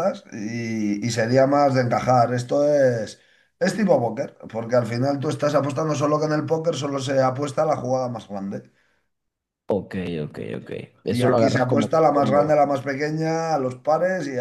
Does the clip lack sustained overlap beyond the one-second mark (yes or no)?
no